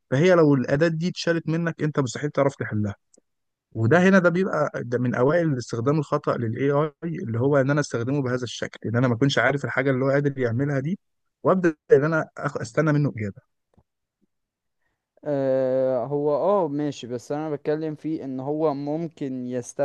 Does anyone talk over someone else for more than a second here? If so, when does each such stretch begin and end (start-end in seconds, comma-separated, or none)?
none